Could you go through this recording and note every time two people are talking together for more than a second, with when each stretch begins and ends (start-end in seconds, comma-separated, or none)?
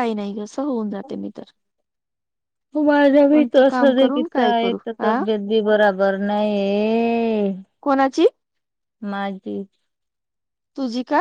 3.3-5.2